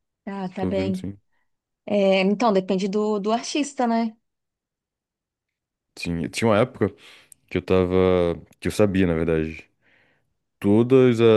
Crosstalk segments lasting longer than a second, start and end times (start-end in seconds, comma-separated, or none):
none